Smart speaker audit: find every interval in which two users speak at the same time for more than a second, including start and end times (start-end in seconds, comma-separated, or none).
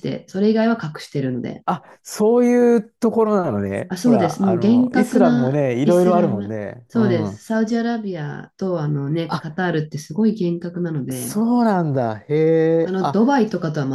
3.9-7.5